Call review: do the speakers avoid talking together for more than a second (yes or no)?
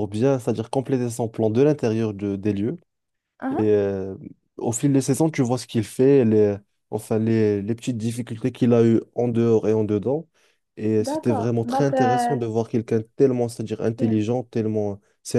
no